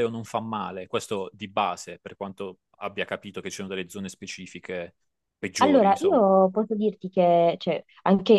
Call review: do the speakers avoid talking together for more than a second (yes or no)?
yes